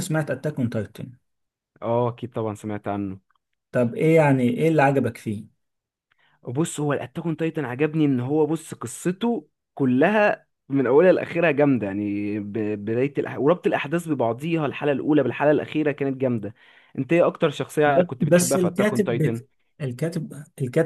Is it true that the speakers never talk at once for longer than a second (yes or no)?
no